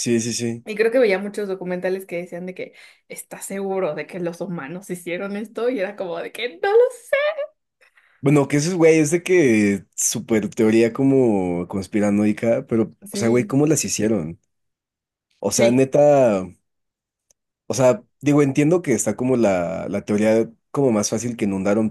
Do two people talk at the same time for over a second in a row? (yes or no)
no